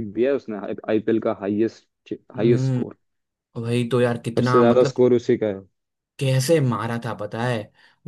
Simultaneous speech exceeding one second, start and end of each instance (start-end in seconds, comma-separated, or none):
none